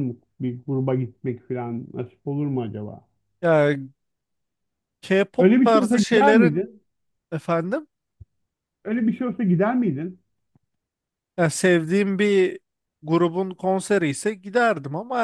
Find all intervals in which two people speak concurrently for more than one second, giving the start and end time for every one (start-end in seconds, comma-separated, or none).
5.4-6.7